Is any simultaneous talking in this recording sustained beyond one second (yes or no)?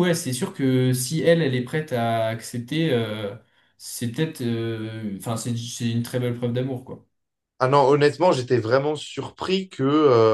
no